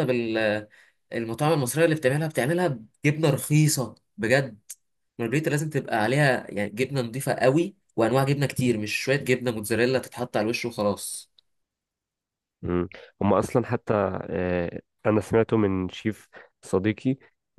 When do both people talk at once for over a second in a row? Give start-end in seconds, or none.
none